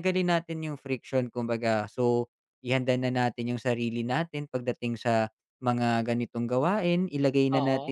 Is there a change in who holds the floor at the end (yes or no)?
no